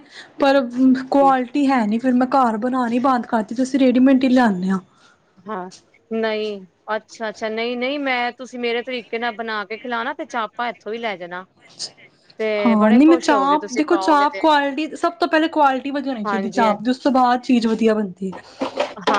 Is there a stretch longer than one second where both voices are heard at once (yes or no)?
yes